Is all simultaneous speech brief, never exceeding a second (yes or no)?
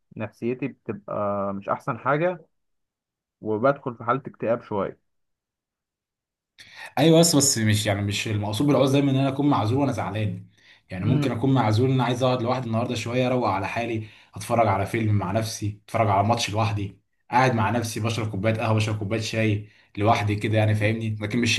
yes